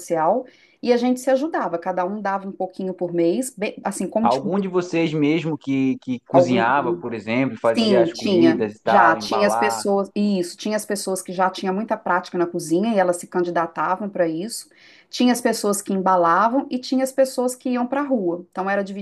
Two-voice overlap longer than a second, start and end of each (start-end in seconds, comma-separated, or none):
7.8-9.8